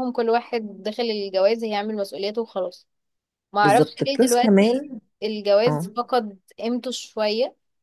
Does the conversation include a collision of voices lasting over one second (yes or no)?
yes